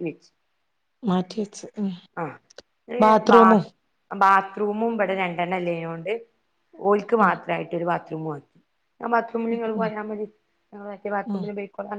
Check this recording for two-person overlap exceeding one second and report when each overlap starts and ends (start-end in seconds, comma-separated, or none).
none